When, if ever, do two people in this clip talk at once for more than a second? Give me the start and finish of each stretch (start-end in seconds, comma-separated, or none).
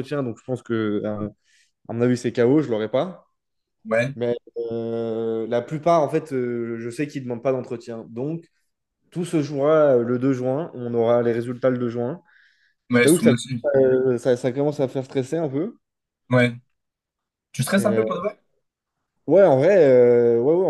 none